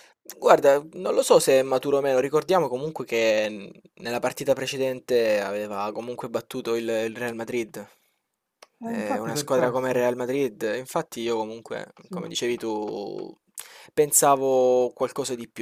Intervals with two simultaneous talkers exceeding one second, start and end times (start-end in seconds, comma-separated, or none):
8.8-10.1